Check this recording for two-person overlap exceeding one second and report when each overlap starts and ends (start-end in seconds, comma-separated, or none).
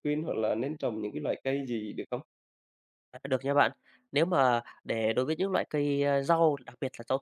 none